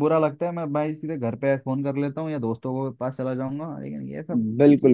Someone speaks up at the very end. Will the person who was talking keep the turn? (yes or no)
no